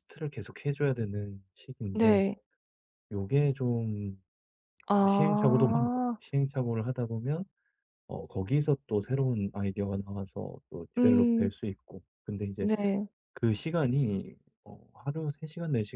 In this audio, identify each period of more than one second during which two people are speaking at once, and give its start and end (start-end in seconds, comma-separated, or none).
4.9-6.2